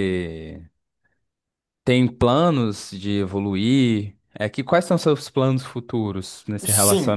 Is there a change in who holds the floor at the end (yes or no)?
yes